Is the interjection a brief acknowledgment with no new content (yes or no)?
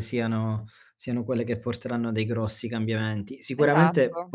yes